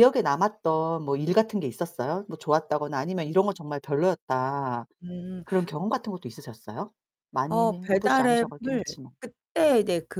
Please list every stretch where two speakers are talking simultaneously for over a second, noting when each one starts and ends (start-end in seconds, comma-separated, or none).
7.5-8.8